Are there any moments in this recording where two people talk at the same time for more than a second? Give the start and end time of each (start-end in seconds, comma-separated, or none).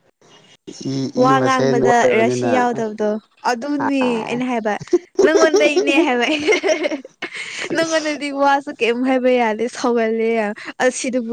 1.1-2.6